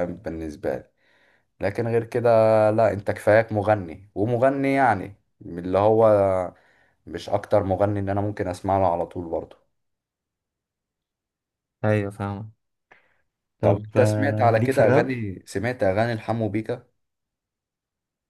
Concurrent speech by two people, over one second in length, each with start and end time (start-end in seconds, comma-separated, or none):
13.6-15.1